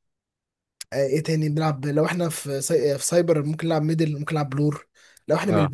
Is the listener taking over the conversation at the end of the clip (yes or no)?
no